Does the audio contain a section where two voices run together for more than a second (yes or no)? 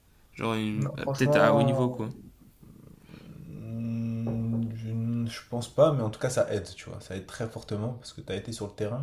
yes